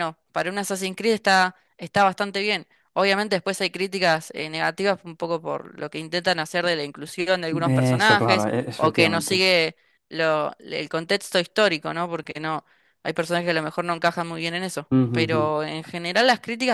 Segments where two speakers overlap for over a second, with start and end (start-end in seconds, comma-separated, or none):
8.0-9.4